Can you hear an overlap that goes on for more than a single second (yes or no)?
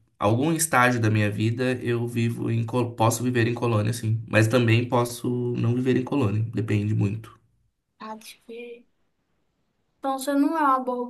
no